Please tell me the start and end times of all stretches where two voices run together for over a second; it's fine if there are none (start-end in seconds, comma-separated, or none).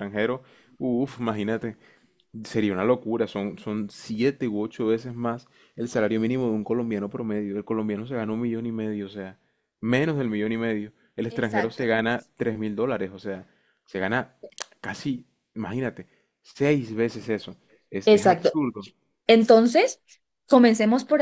none